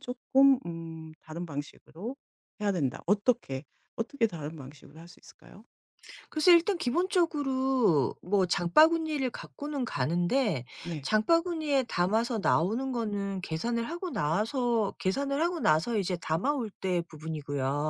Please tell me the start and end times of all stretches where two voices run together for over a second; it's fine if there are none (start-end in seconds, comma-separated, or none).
none